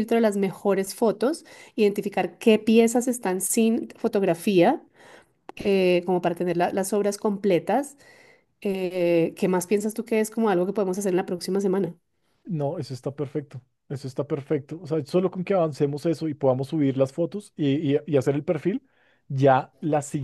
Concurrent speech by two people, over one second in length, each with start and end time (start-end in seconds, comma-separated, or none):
none